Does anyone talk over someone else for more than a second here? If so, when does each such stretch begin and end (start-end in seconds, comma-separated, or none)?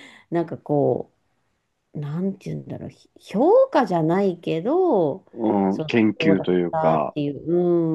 5.7-7.2